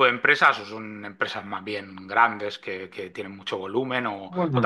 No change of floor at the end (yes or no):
no